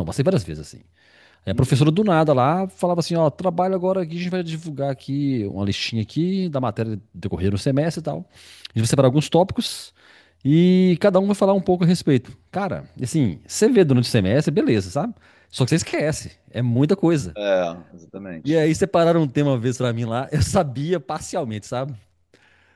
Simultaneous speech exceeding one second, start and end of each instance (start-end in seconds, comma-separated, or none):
none